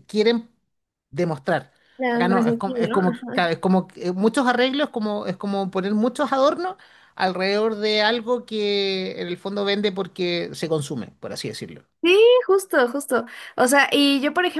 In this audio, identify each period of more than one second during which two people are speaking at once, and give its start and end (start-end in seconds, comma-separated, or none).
2.1-3.4